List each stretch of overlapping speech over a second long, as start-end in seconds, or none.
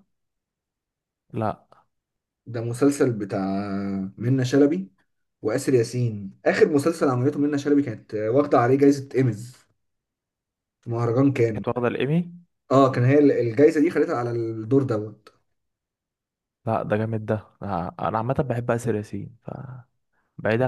none